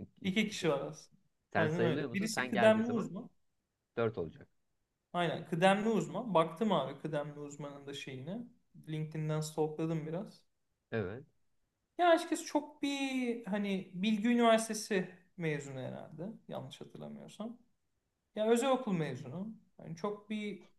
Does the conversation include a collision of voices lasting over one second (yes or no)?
yes